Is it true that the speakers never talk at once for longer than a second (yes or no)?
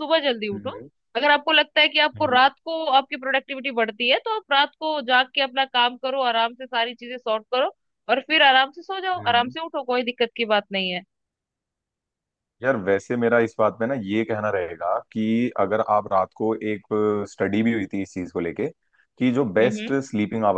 yes